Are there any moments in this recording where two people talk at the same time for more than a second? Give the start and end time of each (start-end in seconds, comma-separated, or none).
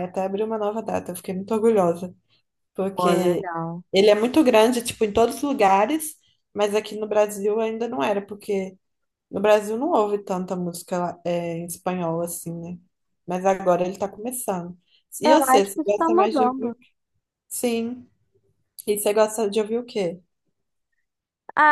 15.2-16.8